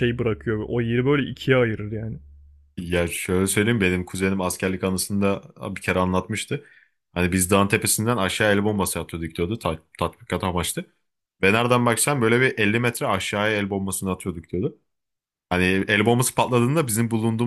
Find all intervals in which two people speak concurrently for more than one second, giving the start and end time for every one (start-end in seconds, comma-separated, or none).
none